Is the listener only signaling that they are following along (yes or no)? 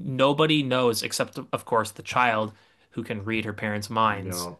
yes